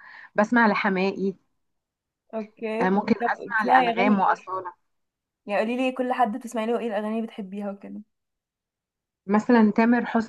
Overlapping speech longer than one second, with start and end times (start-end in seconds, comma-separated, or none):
2.8-4.5